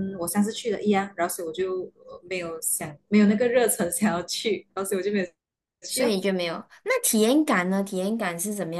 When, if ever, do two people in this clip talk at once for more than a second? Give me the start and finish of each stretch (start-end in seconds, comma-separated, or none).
none